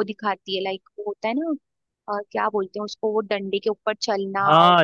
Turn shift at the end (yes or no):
yes